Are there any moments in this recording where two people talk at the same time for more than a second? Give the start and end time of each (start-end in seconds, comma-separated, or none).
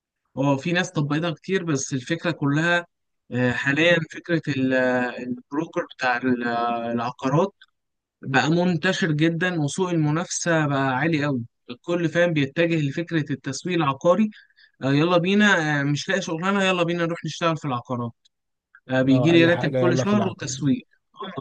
19.0-20.6